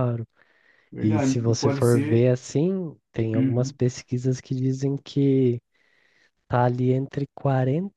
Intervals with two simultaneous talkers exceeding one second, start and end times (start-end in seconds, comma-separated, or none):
1.0-2.3